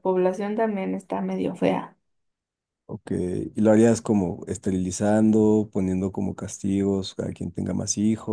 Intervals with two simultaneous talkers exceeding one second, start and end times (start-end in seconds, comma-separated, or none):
none